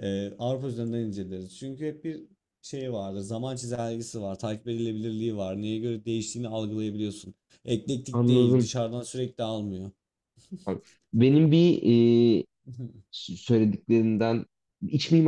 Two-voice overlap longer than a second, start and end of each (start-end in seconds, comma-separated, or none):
none